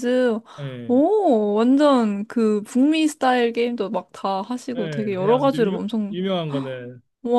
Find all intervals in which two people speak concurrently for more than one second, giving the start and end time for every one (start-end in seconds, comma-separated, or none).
4.8-6.2